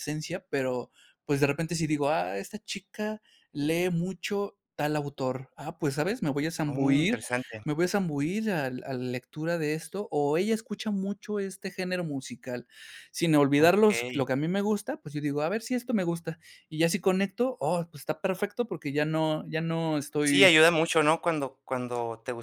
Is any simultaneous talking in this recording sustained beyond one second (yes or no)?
no